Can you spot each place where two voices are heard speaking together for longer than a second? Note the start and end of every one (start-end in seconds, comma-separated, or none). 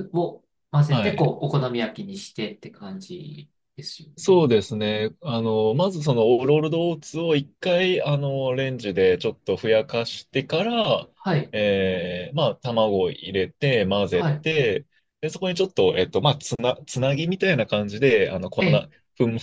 none